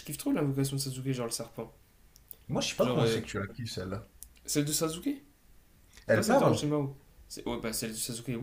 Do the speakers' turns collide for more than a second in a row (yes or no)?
no